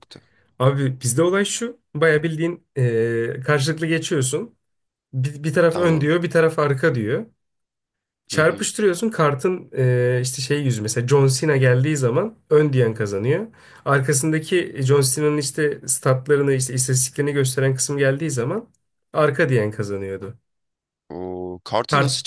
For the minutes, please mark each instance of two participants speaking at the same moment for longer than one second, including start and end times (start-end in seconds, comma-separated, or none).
none